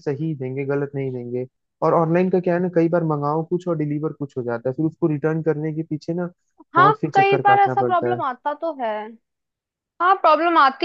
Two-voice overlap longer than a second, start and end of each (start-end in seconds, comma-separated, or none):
6.8-8.2